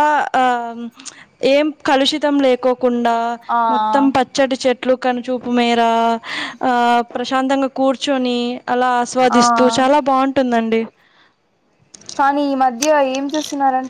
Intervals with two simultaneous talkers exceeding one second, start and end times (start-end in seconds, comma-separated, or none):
none